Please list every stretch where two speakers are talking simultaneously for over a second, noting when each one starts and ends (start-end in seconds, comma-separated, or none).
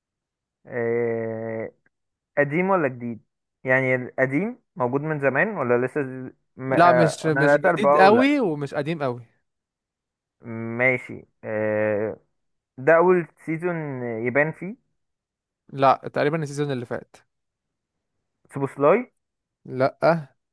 6.7-8.3